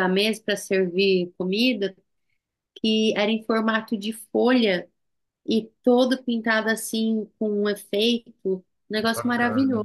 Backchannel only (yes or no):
no